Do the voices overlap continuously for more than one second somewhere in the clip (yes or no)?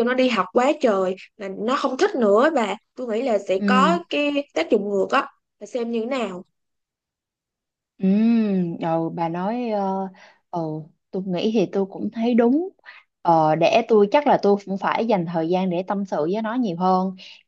no